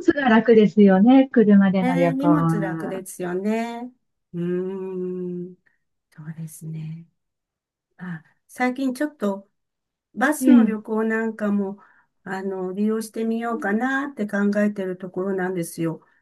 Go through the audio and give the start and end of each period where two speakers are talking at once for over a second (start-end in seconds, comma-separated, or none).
1.8-3.0